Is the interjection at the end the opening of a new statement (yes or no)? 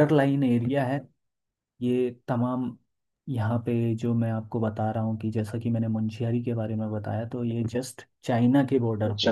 yes